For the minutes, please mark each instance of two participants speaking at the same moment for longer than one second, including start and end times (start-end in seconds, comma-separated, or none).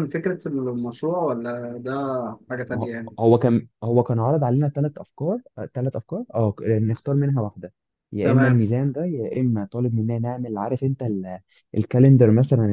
none